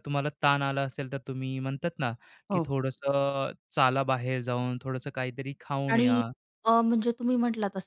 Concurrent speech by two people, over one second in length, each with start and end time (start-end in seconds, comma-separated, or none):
none